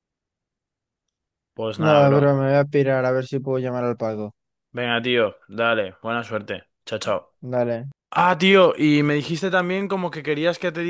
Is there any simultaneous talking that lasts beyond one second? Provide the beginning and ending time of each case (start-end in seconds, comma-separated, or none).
none